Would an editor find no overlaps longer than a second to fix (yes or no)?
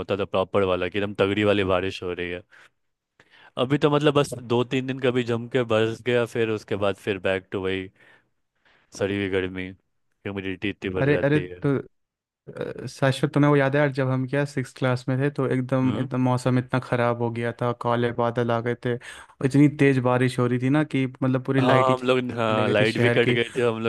no